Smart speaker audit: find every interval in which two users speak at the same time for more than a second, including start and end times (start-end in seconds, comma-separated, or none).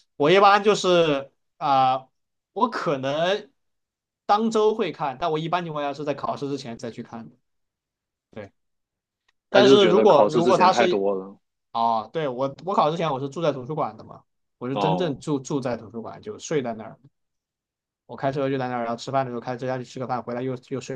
9.5-11.1